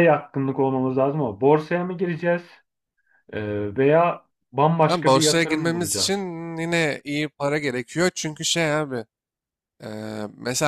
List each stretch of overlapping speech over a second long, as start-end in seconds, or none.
4.9-6.2